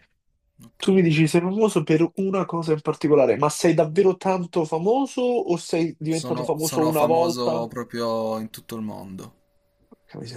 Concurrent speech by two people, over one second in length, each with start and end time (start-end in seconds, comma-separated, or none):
6.1-7.7